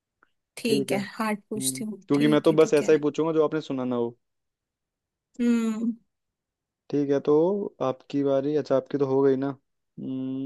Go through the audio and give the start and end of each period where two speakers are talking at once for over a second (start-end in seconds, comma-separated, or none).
0.6-3.0